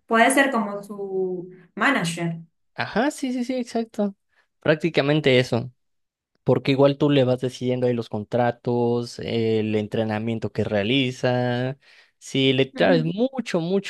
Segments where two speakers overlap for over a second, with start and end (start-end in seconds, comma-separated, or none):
none